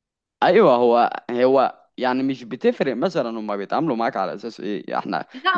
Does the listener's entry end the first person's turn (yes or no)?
yes